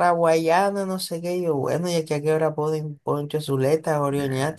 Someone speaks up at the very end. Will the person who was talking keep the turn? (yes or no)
no